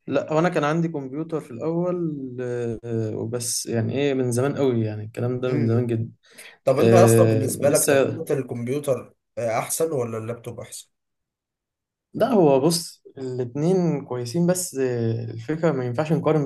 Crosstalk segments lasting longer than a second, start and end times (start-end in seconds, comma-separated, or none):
6.8-8.2